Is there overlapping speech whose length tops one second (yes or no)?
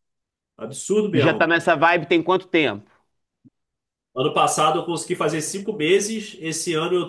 no